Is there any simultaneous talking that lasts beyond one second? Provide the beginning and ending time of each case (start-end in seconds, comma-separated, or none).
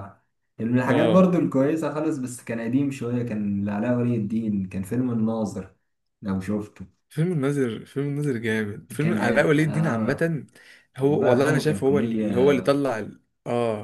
9.0-10.3, 11.0-12.3